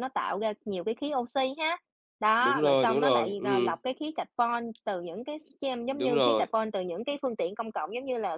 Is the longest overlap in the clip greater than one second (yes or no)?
yes